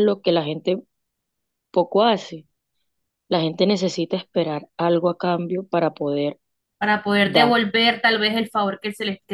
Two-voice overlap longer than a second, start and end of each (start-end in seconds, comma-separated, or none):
none